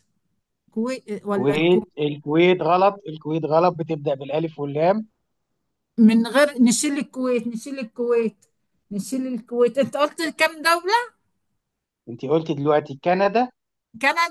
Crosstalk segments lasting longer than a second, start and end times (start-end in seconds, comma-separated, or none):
none